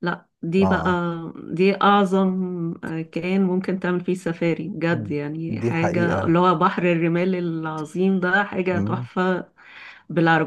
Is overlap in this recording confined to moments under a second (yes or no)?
no